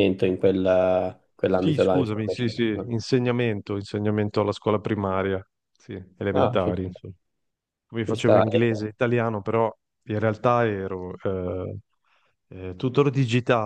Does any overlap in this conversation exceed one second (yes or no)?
yes